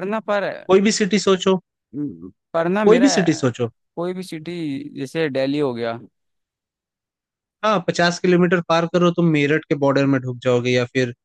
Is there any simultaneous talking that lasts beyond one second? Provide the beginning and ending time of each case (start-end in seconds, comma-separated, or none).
none